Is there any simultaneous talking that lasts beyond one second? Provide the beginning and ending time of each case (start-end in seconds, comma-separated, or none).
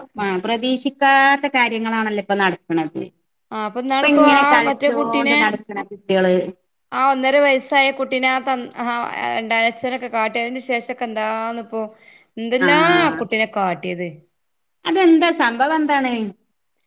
3.5-5.4